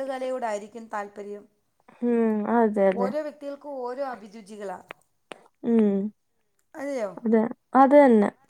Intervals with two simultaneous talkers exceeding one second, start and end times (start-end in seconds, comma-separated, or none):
none